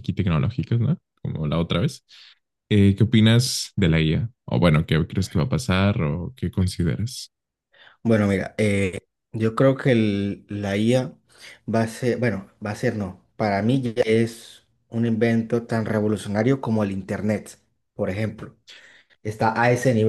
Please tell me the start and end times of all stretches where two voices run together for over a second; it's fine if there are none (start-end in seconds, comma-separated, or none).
none